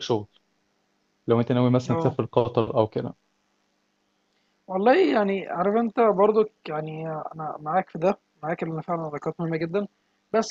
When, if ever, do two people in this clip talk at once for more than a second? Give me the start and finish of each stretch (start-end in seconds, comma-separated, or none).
none